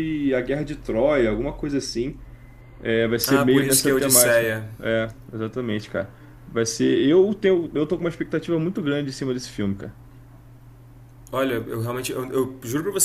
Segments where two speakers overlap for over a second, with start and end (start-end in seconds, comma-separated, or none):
3.3-4.7